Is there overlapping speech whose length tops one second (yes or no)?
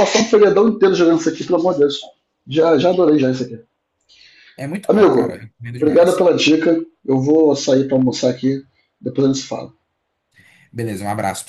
yes